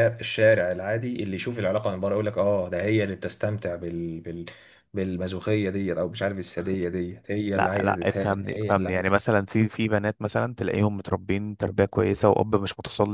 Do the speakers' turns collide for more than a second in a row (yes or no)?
yes